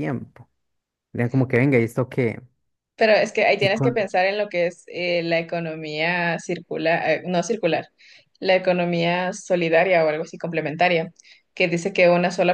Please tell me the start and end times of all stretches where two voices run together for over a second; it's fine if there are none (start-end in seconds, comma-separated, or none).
none